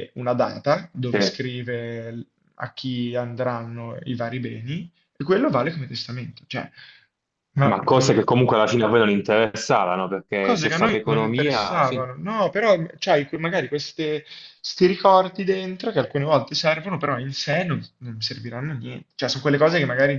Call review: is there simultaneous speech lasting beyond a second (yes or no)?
yes